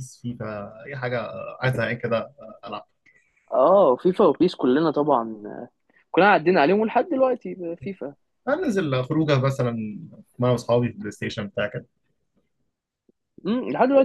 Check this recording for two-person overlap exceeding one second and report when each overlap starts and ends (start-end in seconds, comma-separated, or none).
none